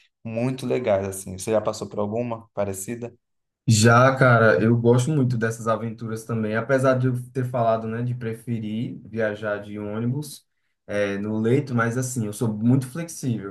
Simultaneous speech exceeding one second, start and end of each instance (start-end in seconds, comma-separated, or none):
none